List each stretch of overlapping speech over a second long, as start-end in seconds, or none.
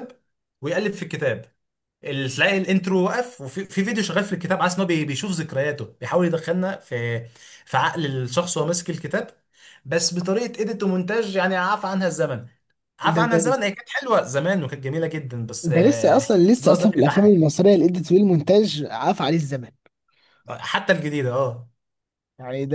15.6-17.4